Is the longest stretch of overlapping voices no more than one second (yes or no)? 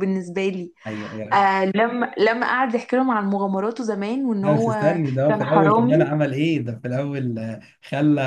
no